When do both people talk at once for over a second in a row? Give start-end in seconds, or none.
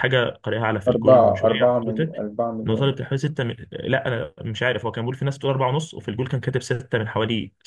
0.9-2.2